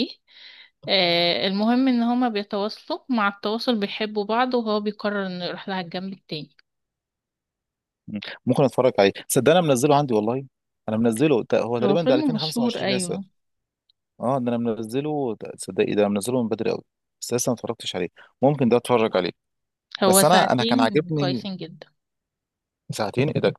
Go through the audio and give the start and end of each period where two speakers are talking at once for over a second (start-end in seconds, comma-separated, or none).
11.8-13.2, 20.1-21.5